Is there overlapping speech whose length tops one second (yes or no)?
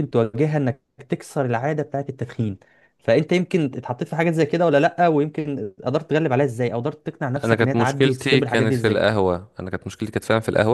yes